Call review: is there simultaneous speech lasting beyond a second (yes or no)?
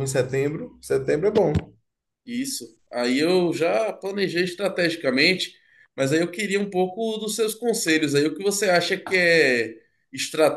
no